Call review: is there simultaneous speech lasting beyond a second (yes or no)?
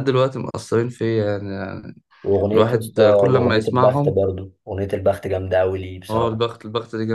yes